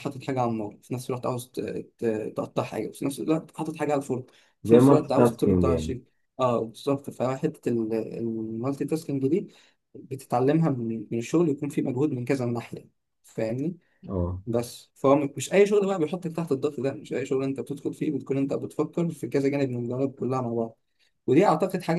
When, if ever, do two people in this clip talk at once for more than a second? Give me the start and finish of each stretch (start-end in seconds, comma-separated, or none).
4.6-6.0